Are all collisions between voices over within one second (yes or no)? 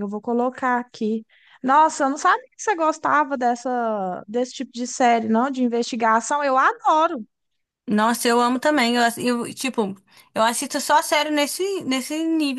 yes